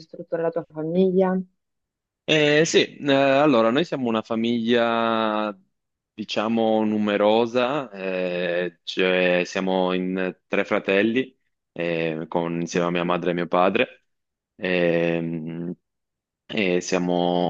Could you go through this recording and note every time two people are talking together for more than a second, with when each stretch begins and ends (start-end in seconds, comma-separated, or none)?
none